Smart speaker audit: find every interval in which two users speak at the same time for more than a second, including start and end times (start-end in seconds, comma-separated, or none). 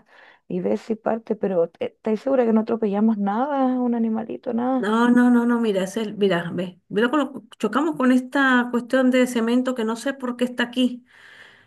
none